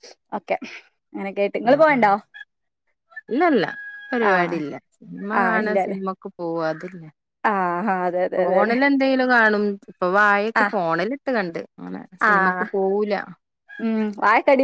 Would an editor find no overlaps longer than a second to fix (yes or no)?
yes